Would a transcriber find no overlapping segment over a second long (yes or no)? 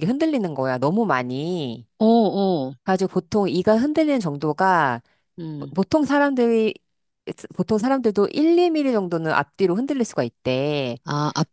yes